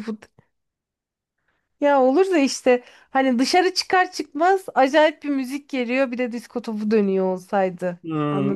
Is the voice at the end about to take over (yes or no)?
yes